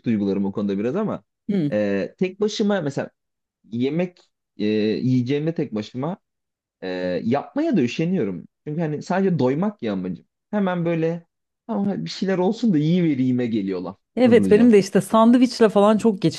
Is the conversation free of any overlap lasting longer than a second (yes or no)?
yes